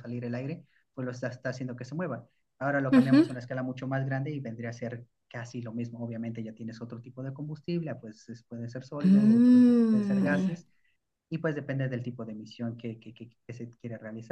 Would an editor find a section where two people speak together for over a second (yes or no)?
yes